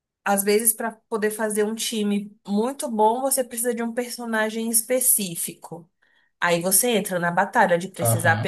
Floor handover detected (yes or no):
no